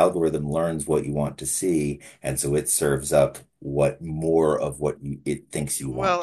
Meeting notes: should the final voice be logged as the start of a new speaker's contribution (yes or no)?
yes